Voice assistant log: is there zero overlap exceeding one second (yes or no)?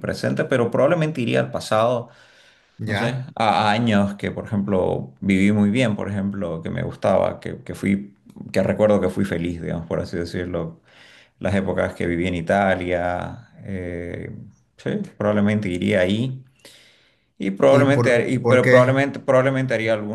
no